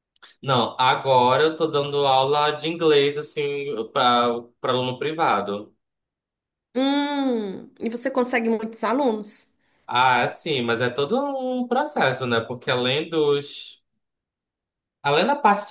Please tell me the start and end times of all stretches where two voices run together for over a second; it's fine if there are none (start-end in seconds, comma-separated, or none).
none